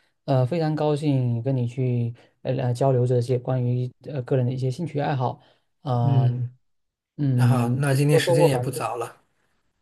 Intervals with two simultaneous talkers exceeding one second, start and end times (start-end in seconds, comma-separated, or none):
7.3-8.8